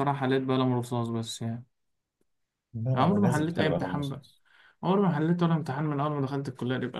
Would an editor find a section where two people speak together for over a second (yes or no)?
yes